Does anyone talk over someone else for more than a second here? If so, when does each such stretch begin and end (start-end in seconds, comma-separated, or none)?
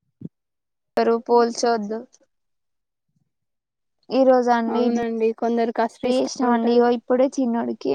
4.8-6.8